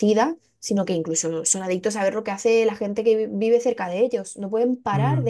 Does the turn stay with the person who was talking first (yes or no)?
yes